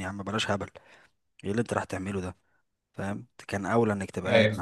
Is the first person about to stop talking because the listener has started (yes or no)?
no